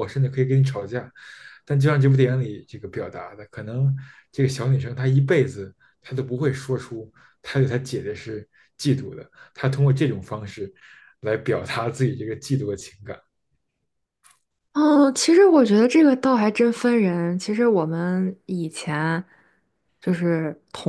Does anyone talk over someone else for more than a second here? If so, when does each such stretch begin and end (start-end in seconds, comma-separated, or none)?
none